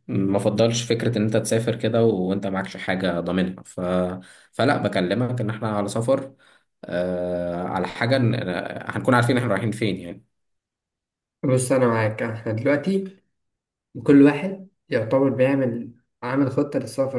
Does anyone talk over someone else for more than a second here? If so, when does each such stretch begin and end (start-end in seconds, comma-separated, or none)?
none